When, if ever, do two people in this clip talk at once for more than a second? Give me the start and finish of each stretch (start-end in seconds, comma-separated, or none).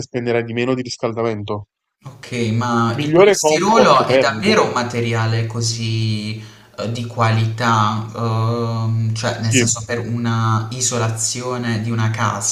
3.0-4.6